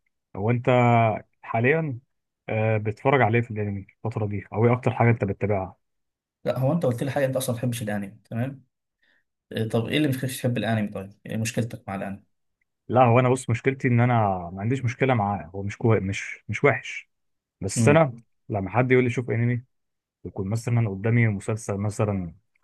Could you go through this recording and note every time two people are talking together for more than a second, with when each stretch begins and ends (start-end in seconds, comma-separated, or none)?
none